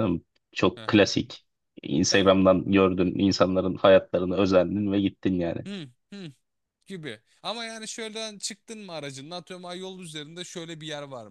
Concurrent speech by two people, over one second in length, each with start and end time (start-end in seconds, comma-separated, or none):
none